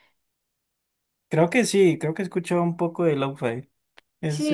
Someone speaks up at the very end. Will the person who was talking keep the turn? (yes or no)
no